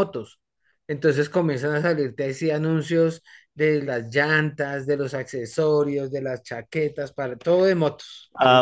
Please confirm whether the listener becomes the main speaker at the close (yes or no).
yes